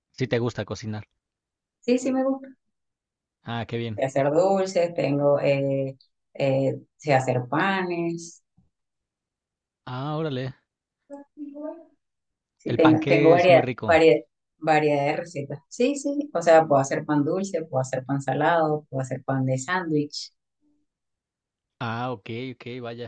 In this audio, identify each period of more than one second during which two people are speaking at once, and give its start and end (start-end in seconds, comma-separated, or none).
12.7-14.0